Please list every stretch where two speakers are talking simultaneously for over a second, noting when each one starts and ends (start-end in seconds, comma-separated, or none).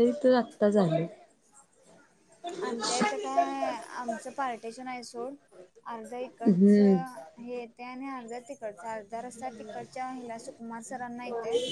none